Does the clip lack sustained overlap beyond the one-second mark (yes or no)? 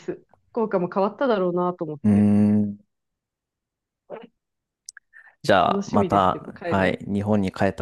no